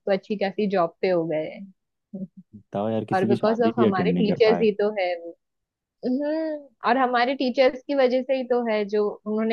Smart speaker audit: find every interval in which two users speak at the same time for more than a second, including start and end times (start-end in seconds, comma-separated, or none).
3.1-4.6